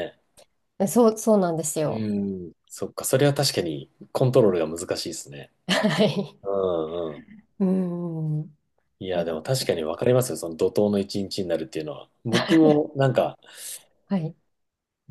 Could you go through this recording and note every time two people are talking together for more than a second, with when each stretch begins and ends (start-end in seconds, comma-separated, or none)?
none